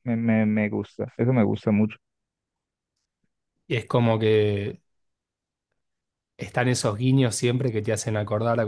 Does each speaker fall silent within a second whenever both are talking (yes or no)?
yes